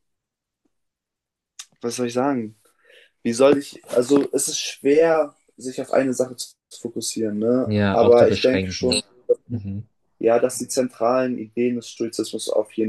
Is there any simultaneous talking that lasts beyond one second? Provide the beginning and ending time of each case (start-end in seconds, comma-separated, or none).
7.7-9.0